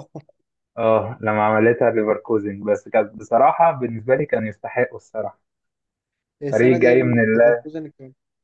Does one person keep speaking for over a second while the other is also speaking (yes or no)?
yes